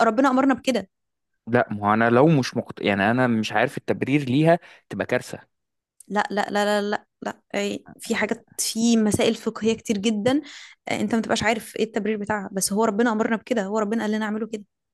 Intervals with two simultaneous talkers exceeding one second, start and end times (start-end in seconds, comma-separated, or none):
none